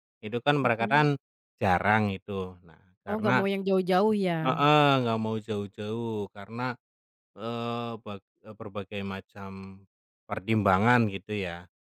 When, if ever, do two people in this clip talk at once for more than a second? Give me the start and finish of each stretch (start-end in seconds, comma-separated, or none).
none